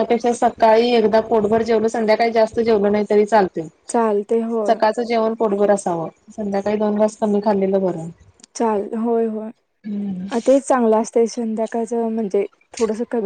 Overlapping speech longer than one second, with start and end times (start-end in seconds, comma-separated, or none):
none